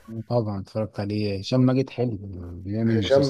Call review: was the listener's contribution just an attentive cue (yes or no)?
no